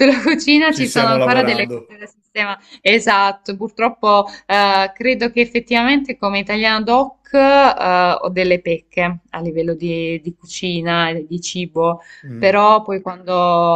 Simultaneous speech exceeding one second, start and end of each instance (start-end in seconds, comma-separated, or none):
0.7-2.0